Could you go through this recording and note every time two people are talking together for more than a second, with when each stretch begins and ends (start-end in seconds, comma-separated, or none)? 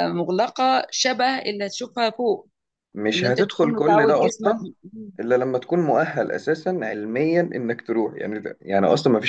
3.1-4.5